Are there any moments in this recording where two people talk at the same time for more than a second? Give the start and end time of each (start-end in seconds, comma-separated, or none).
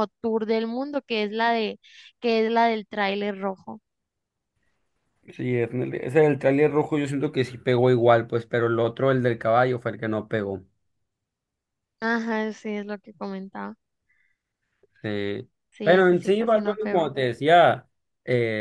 15.7-17.1